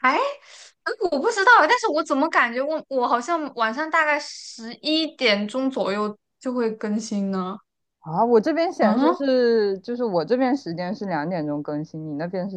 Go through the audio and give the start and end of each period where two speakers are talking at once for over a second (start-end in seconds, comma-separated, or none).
none